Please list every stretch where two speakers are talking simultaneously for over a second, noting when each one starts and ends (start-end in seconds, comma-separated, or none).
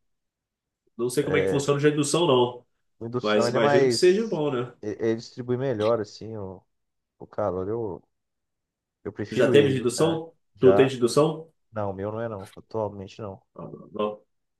3.2-4.4, 9.3-11.0